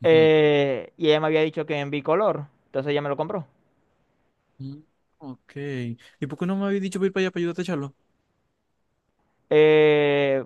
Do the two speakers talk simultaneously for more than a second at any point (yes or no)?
no